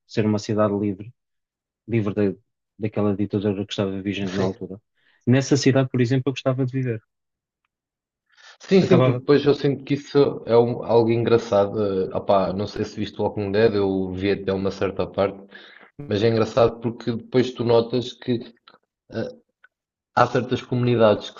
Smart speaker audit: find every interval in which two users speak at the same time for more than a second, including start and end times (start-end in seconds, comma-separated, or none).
none